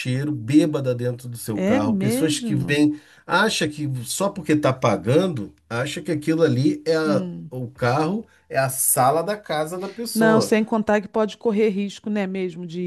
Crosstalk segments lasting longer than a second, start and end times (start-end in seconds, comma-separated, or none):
1.5-2.8